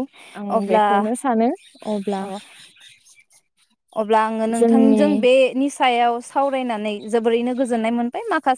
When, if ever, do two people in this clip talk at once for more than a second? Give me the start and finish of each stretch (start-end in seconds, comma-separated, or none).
none